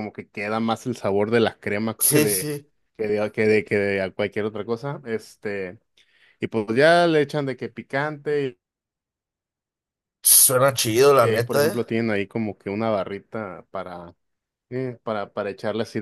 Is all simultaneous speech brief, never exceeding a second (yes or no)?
yes